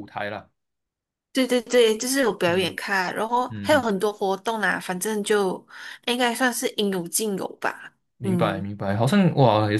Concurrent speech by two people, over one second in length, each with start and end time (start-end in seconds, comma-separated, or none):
none